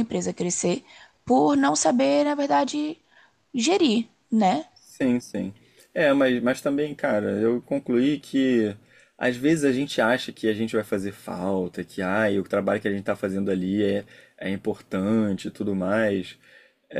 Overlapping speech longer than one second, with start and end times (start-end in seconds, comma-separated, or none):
none